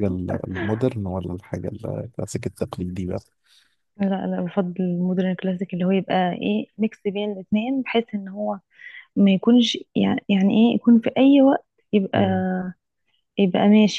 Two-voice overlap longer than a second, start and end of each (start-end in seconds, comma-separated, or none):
none